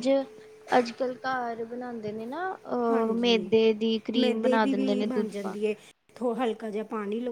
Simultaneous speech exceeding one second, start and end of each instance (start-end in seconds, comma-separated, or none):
4.2-5.7